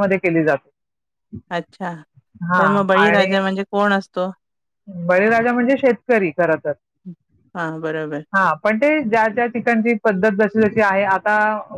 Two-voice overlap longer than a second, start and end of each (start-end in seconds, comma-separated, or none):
none